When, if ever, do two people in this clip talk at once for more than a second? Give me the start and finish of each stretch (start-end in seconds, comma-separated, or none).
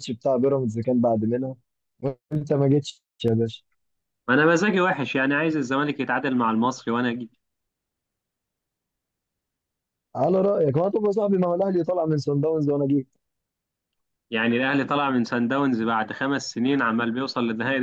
none